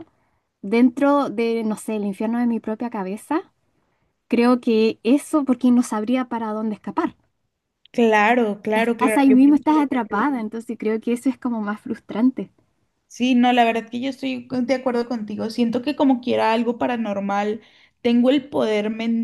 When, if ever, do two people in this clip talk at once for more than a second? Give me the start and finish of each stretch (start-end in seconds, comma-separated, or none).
8.7-10.3